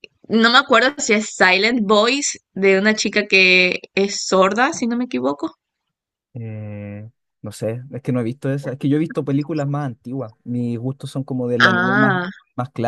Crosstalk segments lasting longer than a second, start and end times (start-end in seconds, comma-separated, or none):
none